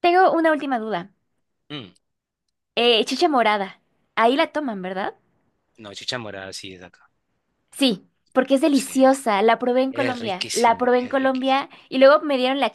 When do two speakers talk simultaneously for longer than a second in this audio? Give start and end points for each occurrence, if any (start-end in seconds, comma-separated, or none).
9.9-11.6